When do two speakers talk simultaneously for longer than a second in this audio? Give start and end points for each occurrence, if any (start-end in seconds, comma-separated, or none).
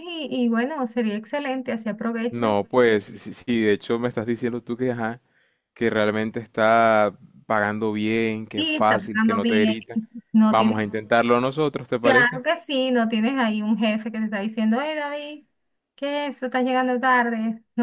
8.5-9.7